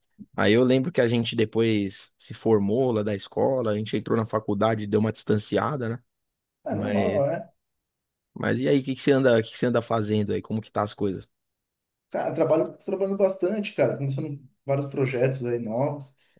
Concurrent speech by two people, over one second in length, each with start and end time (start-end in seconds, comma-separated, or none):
none